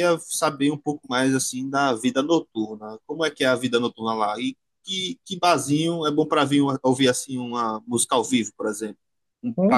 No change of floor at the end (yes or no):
no